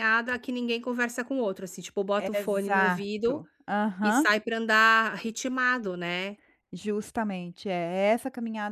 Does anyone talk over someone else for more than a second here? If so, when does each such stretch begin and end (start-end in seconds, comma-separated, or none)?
2.2-3.4